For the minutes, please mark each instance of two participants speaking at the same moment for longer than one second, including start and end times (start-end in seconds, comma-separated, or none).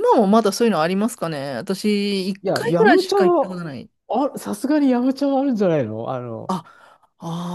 2.4-3.6